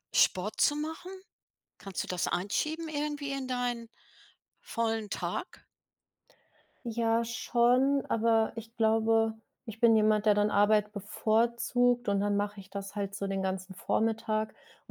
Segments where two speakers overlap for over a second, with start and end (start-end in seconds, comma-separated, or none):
none